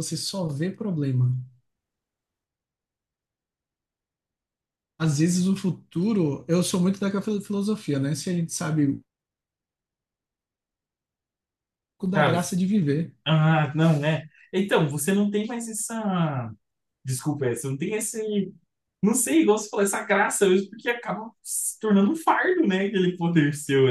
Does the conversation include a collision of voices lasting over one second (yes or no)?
no